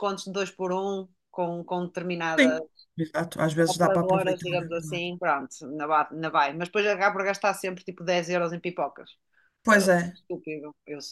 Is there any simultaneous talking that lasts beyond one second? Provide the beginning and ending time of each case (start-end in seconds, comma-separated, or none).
3.7-5.1